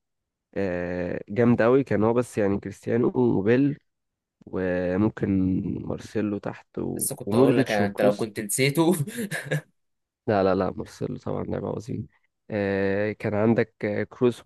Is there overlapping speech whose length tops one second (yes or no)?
yes